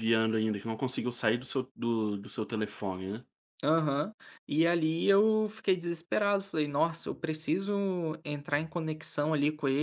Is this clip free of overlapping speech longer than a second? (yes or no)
yes